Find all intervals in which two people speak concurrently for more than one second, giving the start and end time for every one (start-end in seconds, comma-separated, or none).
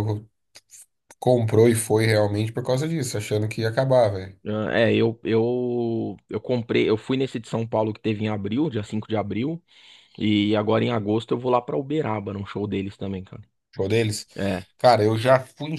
none